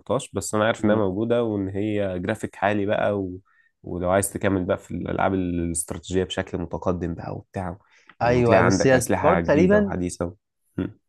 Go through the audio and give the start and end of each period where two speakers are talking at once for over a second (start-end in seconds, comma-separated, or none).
8.2-10.0